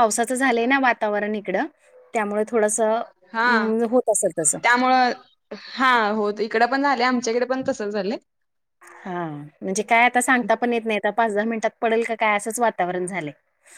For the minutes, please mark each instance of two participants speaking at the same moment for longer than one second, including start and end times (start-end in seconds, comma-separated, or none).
none